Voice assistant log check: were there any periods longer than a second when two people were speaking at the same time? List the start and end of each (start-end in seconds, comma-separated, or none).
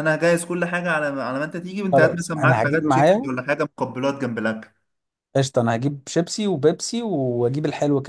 1.9-3.3